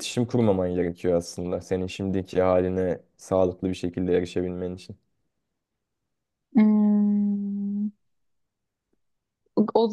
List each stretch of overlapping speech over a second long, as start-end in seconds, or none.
none